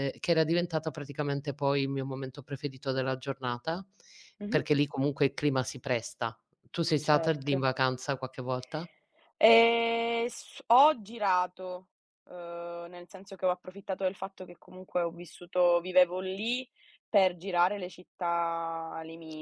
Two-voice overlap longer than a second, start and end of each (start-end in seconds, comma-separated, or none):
none